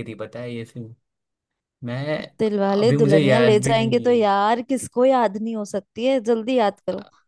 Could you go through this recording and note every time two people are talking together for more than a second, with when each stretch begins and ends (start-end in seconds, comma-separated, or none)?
2.8-4.3